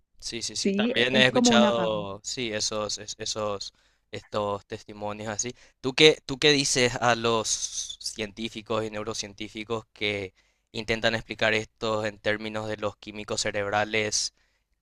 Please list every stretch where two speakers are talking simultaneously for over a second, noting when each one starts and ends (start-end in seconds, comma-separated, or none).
0.6-2.1